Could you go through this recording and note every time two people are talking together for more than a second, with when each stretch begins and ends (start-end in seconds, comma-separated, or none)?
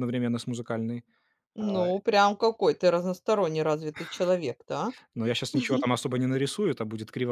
none